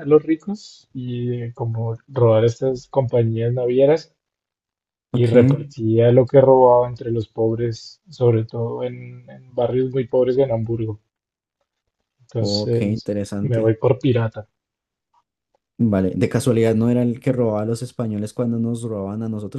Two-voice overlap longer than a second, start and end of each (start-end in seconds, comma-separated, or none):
12.4-13.7